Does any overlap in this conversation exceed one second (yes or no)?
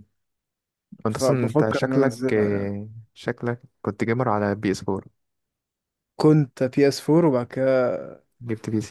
yes